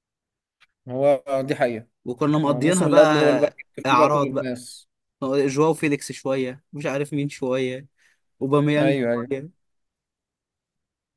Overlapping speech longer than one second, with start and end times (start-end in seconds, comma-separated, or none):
2.5-4.5